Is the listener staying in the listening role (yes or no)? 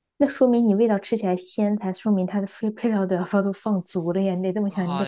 no